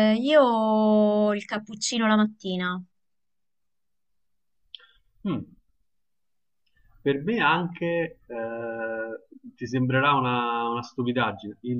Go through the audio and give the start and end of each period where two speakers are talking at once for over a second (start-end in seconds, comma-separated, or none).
none